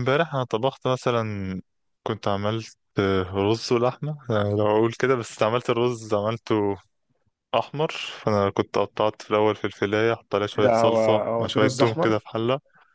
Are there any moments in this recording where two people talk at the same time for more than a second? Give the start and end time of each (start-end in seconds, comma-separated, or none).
10.6-12.2